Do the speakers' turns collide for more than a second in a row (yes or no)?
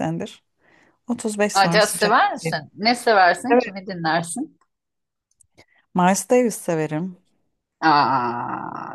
no